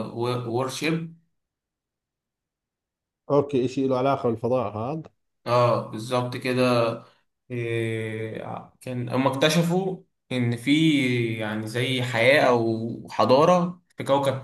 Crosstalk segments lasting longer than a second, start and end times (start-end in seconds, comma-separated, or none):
none